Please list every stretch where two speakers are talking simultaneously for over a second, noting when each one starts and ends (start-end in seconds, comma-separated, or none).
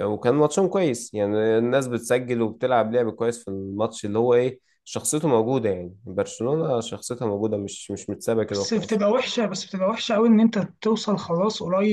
none